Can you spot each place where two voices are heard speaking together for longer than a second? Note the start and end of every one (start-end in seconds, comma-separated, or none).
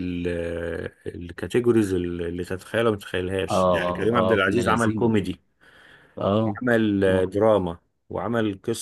3.5-5.2